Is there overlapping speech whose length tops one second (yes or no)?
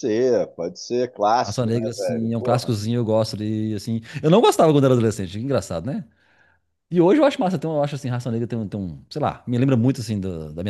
yes